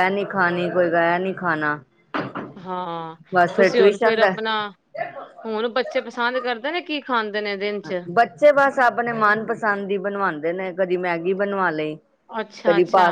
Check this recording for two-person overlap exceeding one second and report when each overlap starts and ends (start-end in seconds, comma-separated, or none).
none